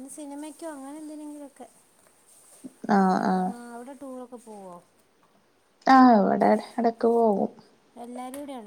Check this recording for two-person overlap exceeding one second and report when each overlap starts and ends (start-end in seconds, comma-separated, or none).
none